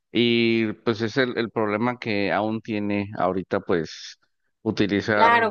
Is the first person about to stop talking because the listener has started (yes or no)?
yes